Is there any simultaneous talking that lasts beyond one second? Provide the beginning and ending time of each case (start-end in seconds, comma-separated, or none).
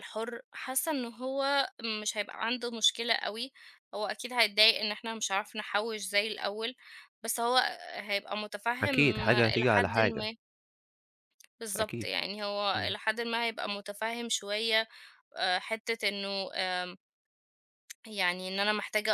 8.8-10.3